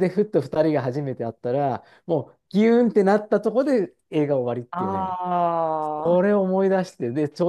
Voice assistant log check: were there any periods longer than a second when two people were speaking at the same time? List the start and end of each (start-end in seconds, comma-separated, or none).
none